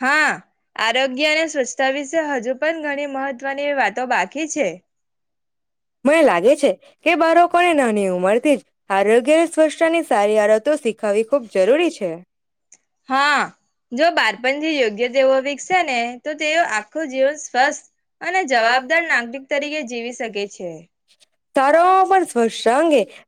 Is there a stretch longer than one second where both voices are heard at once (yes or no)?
yes